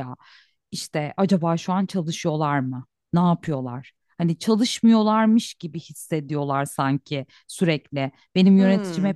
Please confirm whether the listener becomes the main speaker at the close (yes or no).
no